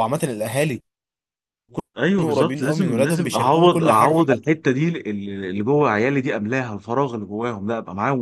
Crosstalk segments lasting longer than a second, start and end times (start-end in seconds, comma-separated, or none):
2.2-4.5